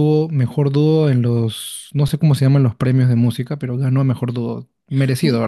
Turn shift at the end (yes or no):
yes